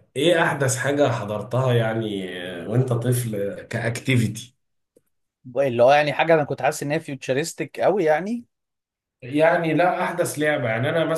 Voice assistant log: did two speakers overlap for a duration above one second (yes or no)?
no